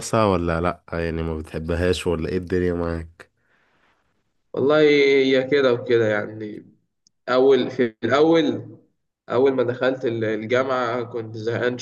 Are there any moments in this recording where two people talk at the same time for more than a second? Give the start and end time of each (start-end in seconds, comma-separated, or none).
none